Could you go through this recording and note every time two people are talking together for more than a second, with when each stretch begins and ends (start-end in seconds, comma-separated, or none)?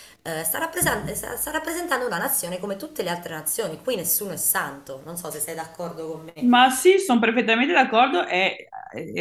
none